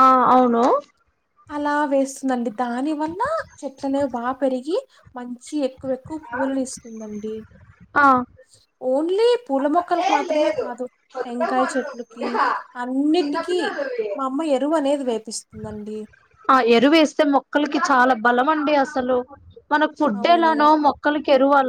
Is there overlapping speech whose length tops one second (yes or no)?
no